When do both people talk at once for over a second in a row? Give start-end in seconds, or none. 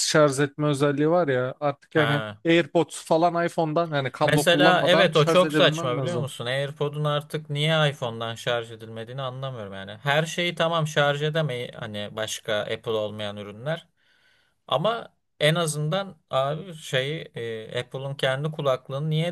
4.2-6.3